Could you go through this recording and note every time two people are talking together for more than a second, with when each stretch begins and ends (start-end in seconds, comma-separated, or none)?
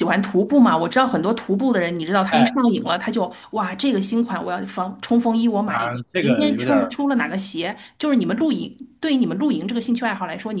5.7-7.0